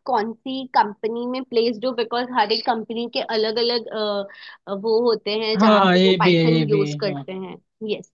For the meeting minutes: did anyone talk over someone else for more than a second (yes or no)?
yes